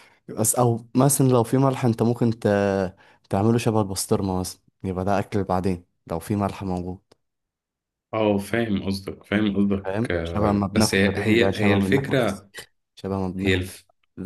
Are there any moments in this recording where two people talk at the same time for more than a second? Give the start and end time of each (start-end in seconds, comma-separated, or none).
9.8-12.5